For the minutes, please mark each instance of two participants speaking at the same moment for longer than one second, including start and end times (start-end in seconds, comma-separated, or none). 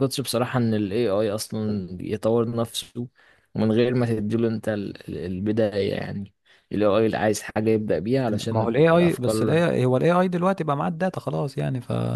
8.3-9.6